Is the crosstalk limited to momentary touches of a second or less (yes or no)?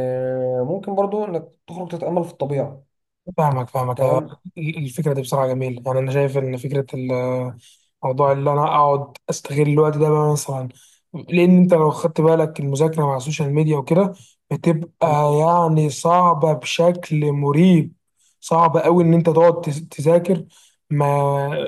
yes